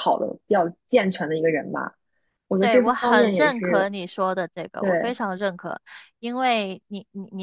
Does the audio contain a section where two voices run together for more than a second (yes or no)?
yes